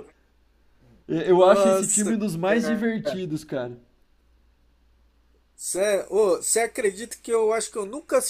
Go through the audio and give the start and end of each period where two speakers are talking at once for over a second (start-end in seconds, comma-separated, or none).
1.3-3.1